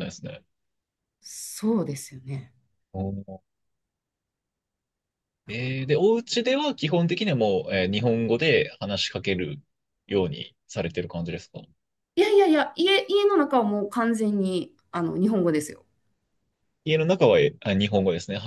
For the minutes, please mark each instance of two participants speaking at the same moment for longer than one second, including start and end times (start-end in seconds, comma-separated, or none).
none